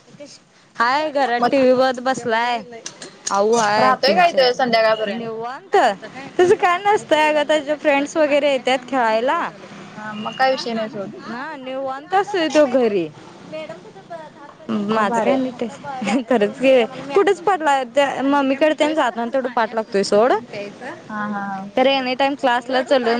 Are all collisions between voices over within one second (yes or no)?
no